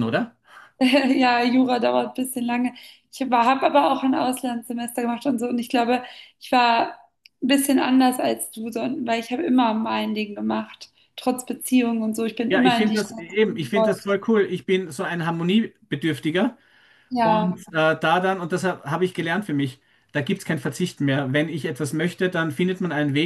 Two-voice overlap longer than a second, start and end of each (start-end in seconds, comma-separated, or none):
12.5-14.1